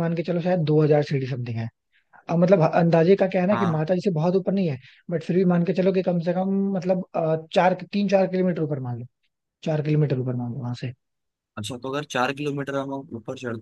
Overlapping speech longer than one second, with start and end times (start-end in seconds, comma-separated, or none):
none